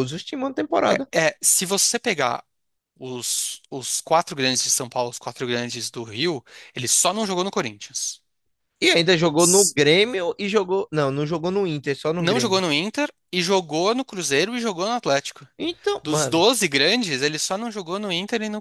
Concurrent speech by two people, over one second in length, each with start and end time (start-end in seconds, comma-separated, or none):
none